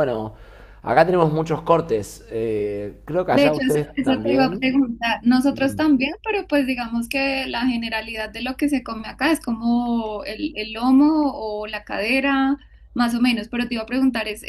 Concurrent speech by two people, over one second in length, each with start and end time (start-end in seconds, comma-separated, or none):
3.3-4.7